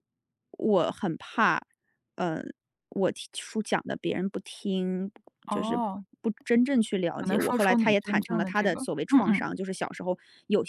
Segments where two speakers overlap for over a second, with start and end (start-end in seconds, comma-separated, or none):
7.1-9.5